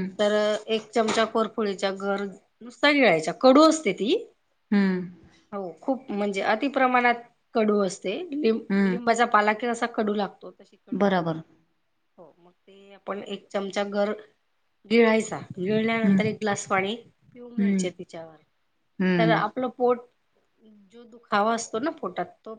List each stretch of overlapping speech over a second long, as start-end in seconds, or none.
none